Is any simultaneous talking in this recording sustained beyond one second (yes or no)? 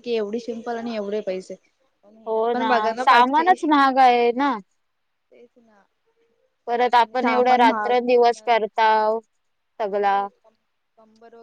yes